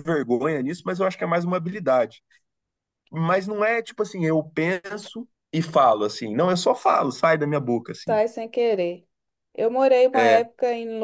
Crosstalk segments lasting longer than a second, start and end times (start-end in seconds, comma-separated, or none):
none